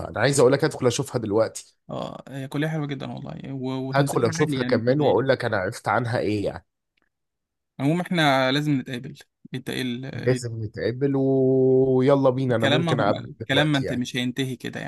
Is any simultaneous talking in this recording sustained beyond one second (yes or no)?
yes